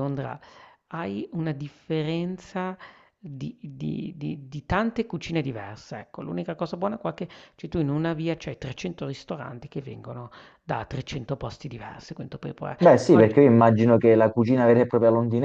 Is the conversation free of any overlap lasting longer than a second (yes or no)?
yes